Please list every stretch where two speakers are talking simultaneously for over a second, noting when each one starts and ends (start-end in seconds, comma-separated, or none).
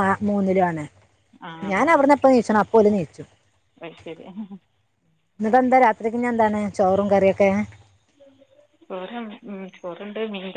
none